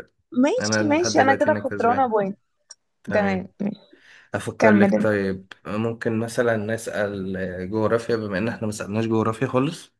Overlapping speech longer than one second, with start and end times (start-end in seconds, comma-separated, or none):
0.6-2.1